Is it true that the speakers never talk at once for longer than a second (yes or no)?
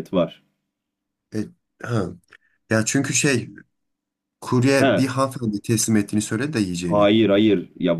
yes